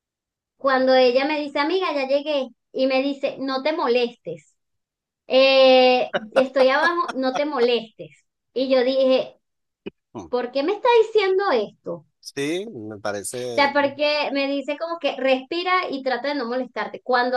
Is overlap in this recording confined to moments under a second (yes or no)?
yes